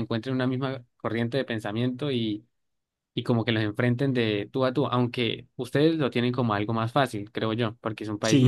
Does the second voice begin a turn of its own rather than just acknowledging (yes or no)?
yes